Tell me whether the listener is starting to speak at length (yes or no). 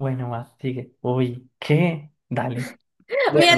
yes